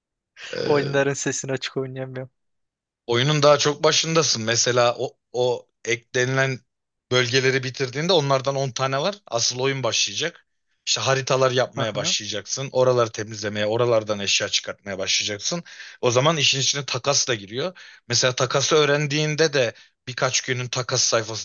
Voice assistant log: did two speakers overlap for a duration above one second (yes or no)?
no